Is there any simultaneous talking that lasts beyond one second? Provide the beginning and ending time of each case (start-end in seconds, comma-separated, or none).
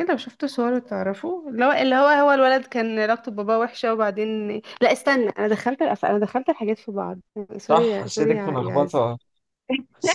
7.7-9.0